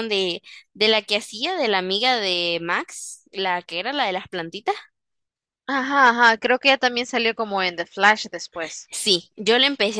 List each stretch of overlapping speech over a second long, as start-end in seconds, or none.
none